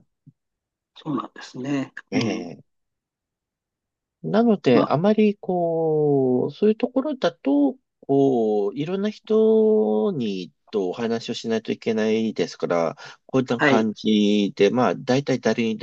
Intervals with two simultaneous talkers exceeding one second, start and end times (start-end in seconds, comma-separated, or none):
none